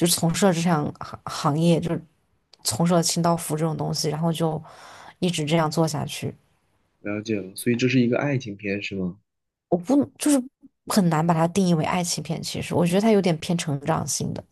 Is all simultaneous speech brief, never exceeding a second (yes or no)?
yes